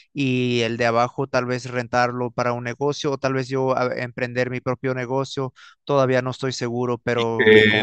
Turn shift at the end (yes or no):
yes